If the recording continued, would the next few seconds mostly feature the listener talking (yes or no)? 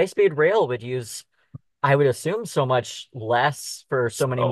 yes